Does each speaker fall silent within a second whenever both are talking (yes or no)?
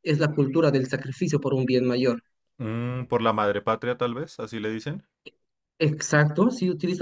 yes